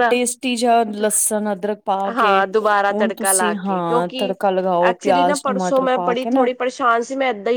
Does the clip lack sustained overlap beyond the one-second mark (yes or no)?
no